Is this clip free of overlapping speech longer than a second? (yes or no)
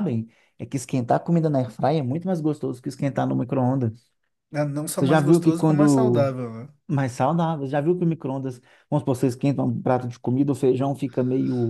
no